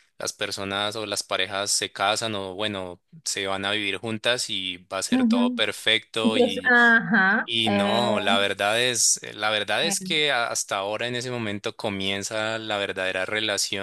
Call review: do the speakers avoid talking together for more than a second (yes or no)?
yes